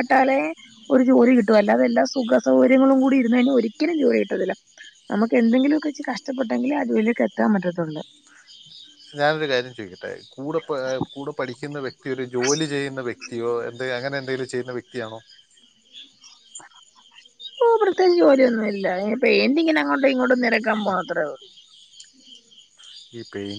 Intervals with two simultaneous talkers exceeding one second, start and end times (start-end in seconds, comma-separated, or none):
none